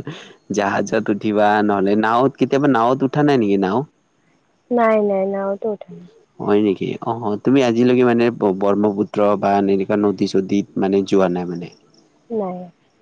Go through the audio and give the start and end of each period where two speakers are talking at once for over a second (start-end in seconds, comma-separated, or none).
none